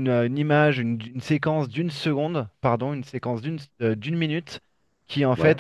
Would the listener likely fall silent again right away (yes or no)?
yes